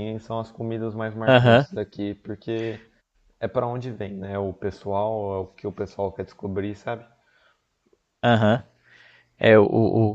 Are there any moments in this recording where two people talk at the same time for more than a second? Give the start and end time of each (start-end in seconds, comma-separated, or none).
none